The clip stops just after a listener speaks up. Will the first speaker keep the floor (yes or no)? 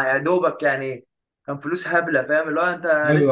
yes